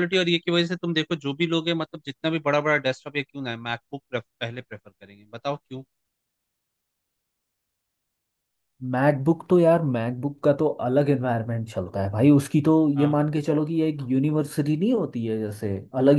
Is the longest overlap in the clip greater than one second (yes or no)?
no